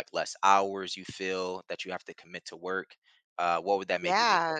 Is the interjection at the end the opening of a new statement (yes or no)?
yes